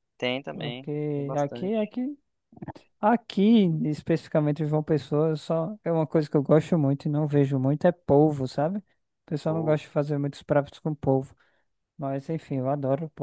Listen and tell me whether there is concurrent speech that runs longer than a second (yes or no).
yes